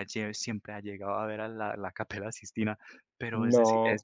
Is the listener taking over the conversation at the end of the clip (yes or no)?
no